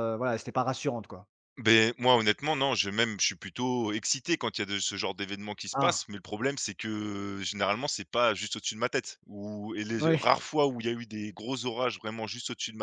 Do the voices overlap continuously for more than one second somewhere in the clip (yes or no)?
no